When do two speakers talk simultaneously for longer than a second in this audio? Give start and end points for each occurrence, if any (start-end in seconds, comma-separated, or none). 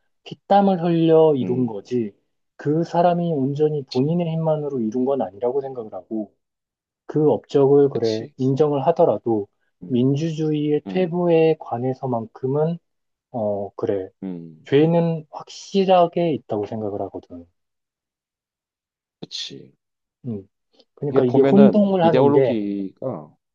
21.1-22.6